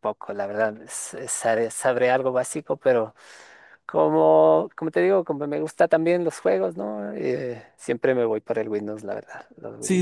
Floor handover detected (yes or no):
yes